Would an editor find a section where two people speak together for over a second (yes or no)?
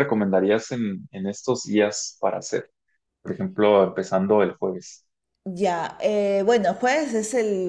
no